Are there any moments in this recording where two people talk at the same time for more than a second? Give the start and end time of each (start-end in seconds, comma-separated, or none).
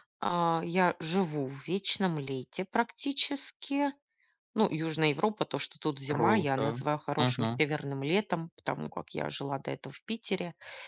6.1-7.6